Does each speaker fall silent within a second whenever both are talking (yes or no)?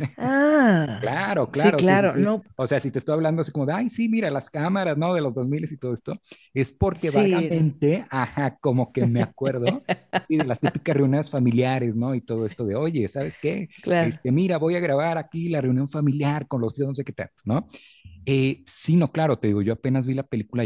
no